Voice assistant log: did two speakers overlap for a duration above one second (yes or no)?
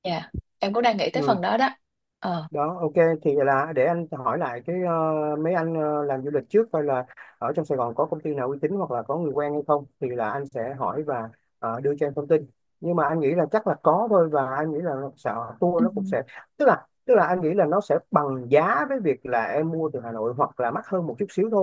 no